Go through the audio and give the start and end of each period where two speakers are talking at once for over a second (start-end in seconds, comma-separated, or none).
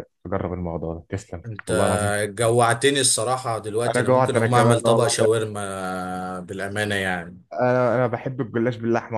3.9-5.4